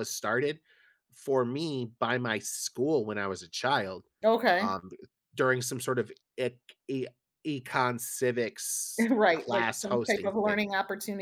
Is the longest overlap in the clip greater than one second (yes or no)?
yes